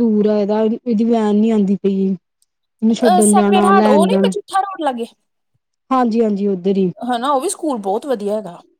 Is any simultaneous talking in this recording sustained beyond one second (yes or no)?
yes